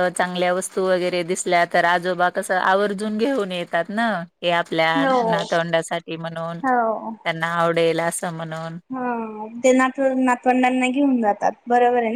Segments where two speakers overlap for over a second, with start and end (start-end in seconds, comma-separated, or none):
none